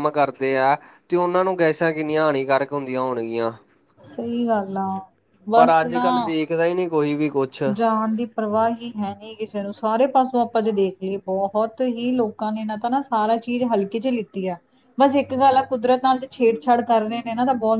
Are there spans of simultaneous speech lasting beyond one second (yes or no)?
no